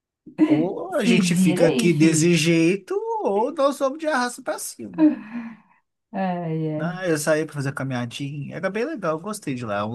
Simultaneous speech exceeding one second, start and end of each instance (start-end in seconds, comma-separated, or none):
1.0-2.4